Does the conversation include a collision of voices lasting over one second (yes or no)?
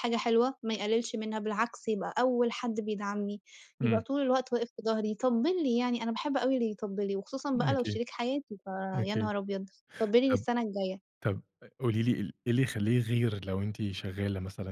no